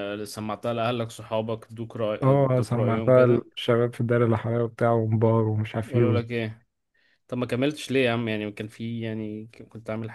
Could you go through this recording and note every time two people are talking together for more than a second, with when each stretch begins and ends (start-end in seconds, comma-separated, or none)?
2.2-3.5